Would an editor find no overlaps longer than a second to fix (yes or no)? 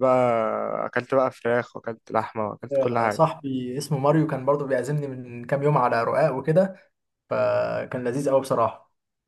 yes